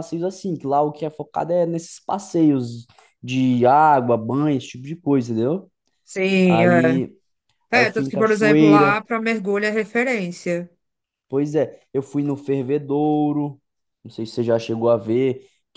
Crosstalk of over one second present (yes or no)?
yes